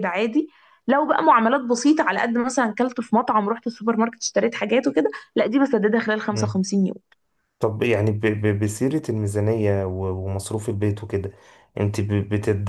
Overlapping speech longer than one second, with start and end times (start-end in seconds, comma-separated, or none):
none